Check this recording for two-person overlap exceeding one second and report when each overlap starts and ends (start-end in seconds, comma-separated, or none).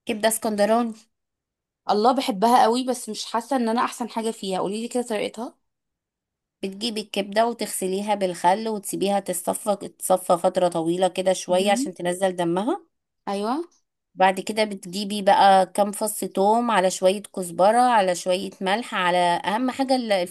none